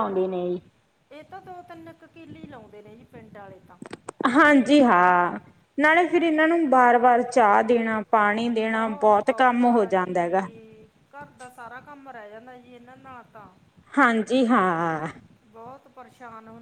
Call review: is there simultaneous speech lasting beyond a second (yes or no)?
yes